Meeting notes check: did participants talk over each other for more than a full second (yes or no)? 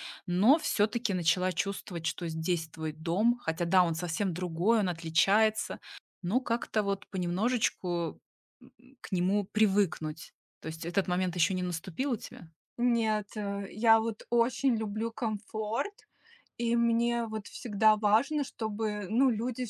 no